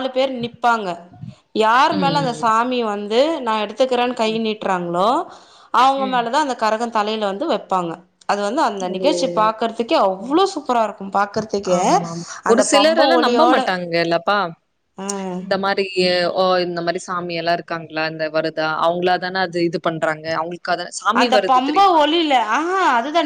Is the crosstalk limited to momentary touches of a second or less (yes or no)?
yes